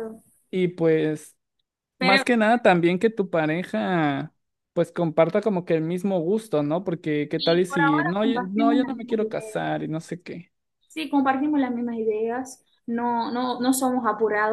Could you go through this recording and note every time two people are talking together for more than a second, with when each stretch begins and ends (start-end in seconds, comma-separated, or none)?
7.4-9.6